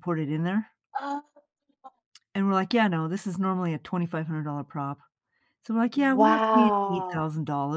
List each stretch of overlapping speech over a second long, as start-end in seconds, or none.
5.9-7.2